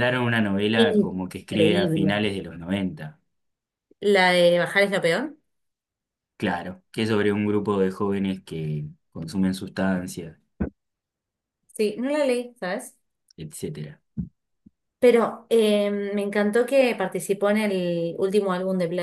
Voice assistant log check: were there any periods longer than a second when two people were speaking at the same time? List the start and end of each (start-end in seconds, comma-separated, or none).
0.8-2.2